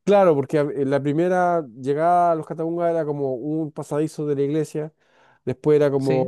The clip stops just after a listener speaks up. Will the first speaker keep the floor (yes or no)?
yes